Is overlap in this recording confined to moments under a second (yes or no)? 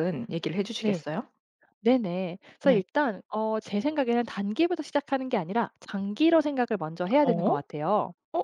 yes